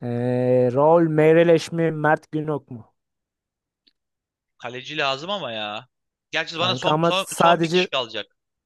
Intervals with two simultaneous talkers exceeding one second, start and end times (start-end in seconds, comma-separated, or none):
6.5-7.9